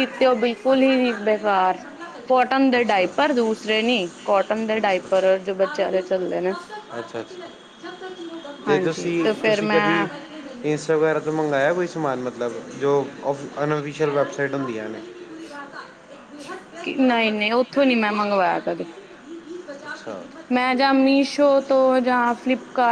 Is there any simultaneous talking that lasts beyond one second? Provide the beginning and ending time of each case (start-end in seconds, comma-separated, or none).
8.7-10.1